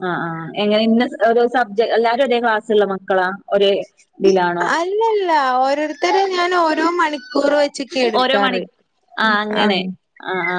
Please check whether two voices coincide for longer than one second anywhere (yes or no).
no